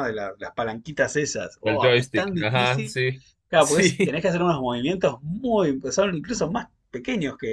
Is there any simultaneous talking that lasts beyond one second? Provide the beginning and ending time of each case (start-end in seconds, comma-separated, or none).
1.6-3.0